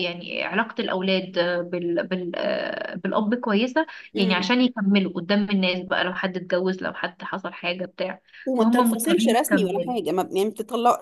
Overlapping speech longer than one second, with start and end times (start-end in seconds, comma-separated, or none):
8.4-9.9